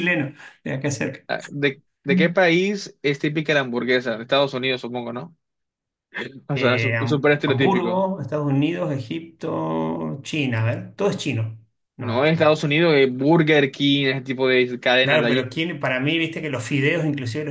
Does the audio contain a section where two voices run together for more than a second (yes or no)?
yes